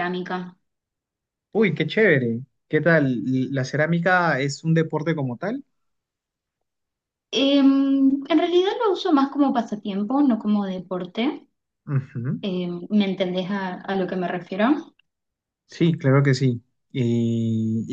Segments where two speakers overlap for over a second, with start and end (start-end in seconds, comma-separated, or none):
none